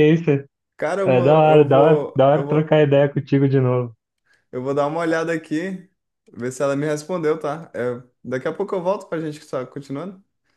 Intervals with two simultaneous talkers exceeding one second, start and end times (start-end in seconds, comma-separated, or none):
1.1-2.9